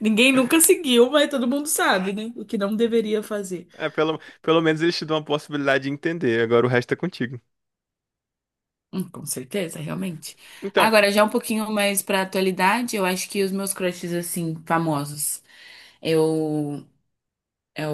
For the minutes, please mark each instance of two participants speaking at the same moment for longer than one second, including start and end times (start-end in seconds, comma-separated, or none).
none